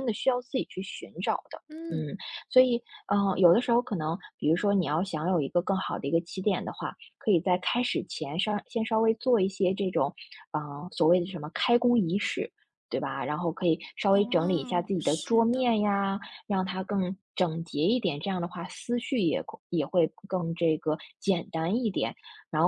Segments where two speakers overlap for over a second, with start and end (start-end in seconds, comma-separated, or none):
14.1-15.7